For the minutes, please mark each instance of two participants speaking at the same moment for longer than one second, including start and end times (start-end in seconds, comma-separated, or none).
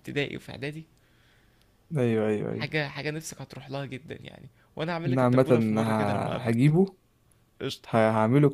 5.0-6.7